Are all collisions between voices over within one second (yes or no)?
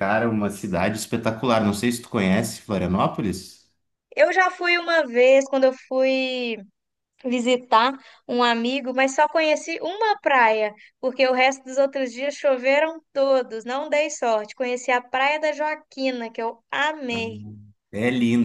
yes